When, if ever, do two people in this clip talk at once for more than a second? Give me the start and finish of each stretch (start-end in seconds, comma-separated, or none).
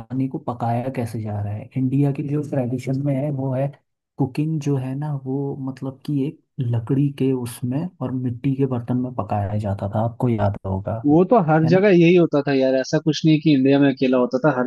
none